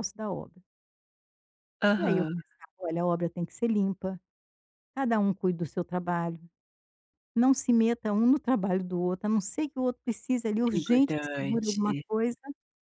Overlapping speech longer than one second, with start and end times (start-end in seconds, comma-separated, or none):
10.7-12.0